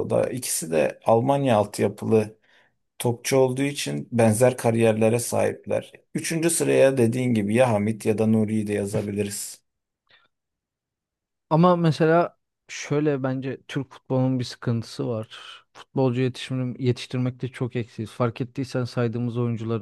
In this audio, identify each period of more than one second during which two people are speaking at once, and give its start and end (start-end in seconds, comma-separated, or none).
none